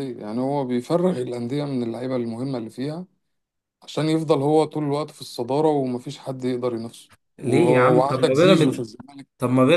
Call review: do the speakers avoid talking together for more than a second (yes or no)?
no